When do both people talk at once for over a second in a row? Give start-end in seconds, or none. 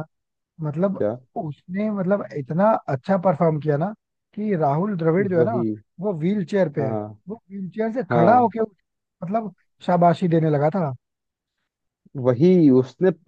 none